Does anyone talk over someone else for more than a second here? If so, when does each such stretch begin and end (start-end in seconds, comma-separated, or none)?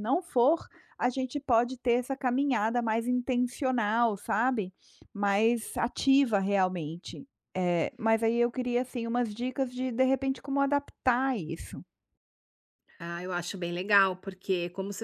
none